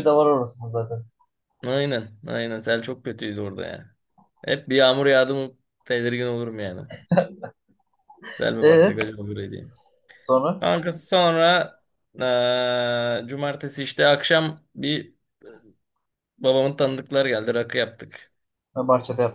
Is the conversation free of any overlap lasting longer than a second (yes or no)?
yes